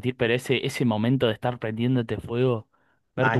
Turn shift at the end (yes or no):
no